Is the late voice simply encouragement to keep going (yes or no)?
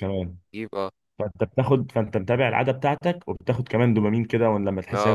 no